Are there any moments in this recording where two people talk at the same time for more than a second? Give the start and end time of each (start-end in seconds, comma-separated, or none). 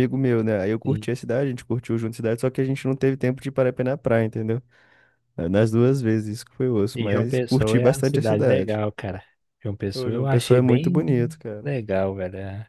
6.9-8.8, 9.9-11.7